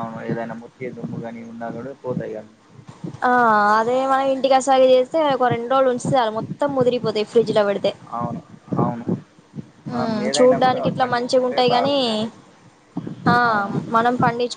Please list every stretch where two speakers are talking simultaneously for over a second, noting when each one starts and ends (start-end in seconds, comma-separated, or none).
9.9-11.9